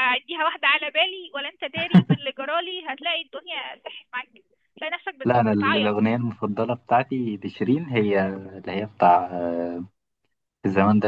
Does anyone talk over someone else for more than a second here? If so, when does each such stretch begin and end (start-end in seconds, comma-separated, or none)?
none